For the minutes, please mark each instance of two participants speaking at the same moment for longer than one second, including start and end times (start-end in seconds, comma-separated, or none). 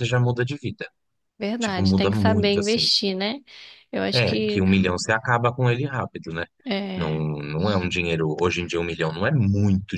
1.6-2.9